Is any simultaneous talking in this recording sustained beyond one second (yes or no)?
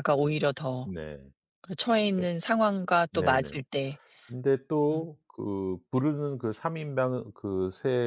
no